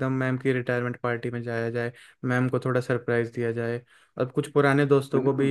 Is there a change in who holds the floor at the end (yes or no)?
no